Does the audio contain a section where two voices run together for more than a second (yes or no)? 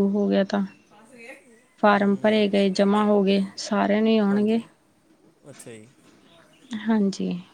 no